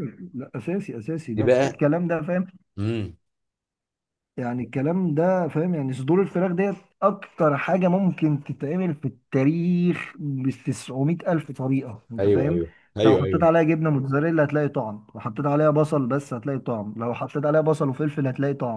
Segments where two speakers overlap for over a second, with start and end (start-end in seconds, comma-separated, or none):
12.2-13.5